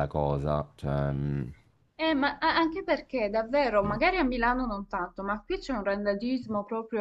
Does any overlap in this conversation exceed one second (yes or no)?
no